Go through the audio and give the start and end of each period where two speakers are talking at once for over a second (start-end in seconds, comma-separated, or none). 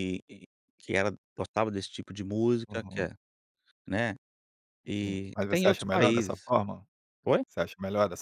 4.9-6.5